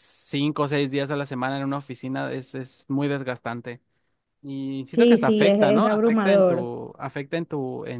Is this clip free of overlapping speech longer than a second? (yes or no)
no